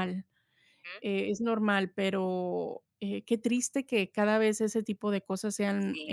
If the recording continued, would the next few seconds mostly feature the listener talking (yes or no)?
yes